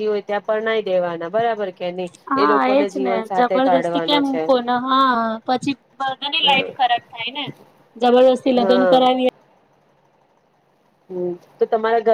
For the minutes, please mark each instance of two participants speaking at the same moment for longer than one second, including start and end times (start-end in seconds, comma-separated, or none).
2.3-4.4